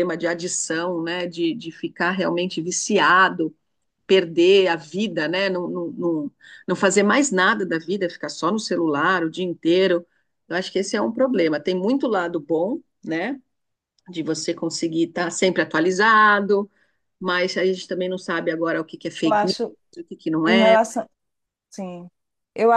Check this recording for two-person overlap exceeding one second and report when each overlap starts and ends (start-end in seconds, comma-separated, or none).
none